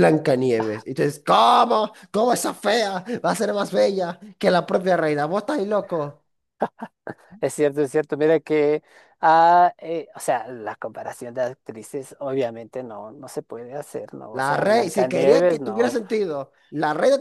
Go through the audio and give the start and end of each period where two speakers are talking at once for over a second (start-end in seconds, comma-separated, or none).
14.3-15.9